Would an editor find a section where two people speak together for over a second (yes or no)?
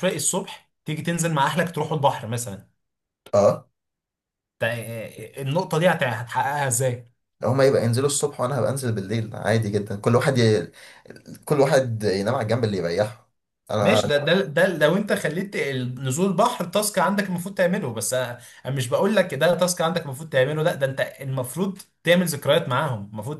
no